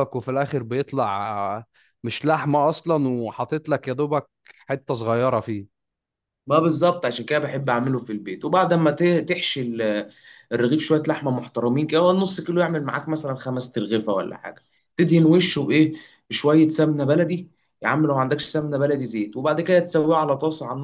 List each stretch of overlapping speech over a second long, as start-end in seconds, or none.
none